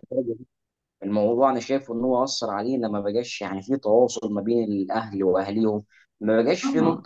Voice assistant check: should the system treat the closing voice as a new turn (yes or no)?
yes